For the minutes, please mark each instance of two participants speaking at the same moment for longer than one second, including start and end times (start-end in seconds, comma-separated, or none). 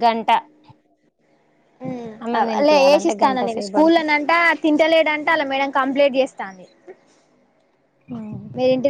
2.2-4.1